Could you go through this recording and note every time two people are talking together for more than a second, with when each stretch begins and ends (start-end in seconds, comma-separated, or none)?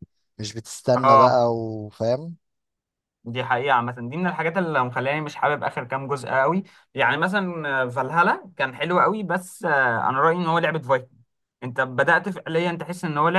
none